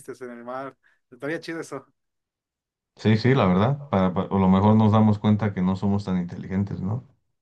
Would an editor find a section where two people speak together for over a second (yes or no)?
no